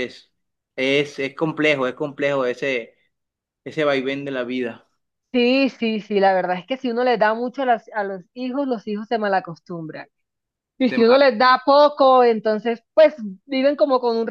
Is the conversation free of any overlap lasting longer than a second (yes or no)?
yes